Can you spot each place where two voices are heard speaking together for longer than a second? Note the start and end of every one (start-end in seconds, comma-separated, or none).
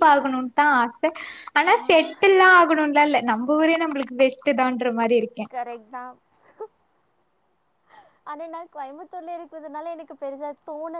none